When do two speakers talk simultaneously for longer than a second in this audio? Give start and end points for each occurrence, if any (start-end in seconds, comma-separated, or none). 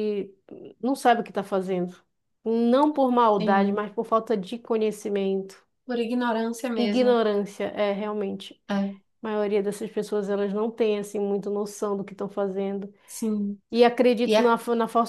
none